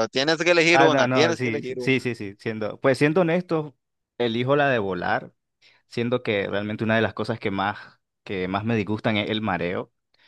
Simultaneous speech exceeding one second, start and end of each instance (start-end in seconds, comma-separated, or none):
0.7-2.1